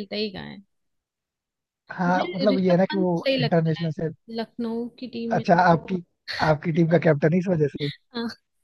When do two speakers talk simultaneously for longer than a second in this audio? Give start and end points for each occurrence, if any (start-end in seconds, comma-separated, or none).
2.1-3.9